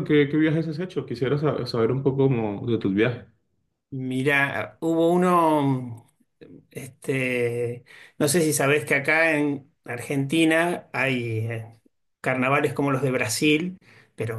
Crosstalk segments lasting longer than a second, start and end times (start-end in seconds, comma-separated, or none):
none